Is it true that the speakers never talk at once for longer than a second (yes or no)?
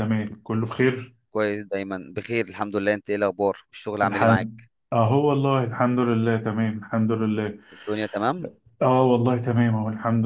yes